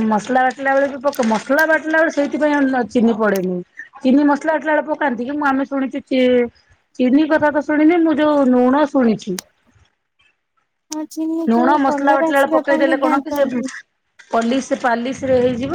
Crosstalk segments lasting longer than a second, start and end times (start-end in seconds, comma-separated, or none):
11.5-13.6